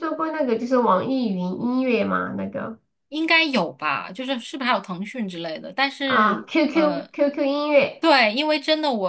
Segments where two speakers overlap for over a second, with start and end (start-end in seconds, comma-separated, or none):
none